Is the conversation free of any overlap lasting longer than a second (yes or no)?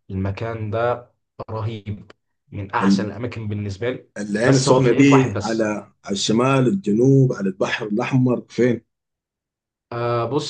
no